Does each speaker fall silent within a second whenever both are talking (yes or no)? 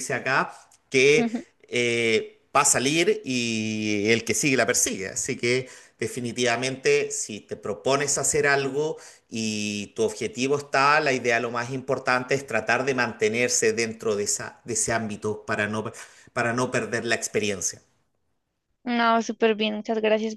yes